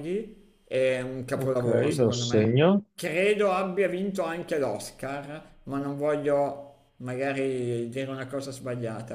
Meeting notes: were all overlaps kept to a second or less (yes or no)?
no